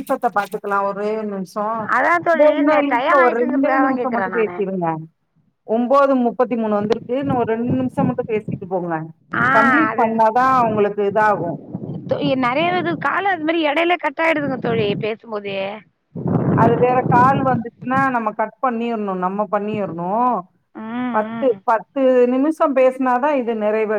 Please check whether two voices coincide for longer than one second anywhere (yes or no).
yes